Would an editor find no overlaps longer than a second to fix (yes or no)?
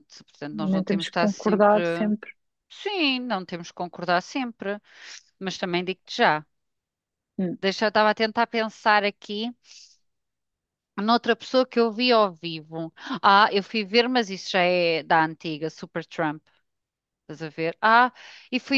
no